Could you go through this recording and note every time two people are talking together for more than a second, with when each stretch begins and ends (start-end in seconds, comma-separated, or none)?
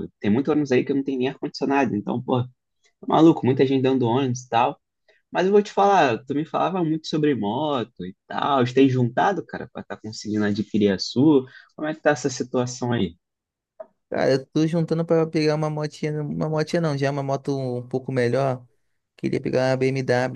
none